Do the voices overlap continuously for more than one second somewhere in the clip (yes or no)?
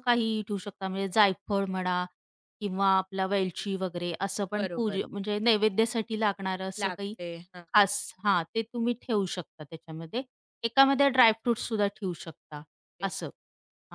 no